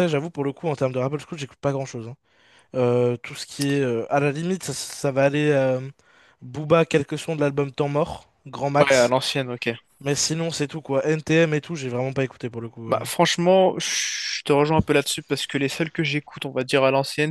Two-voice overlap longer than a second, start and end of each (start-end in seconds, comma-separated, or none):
none